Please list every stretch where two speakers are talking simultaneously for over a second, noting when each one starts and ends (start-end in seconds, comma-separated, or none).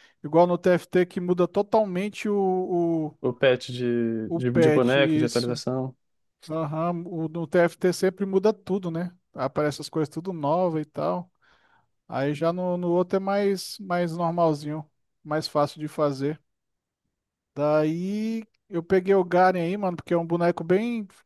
4.3-5.6